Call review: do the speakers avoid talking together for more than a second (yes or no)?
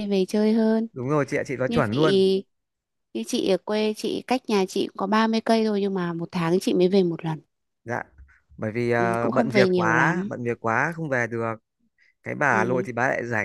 no